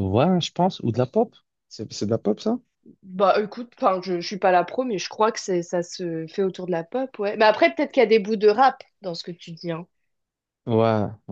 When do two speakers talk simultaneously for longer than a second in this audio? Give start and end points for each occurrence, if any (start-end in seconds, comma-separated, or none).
none